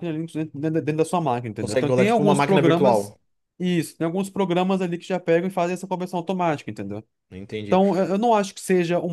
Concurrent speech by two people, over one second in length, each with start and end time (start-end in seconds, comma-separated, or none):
1.6-3.1